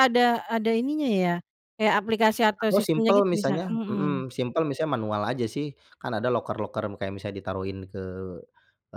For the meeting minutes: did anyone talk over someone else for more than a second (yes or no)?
yes